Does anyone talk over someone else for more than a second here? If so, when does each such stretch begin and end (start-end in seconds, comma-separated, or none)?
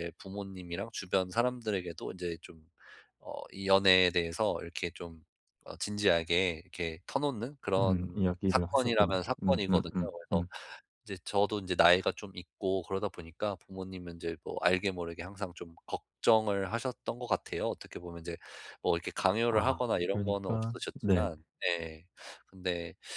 7.8-10.4, 19.5-21.3